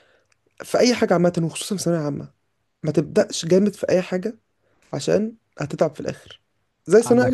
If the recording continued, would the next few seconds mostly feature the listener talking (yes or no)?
no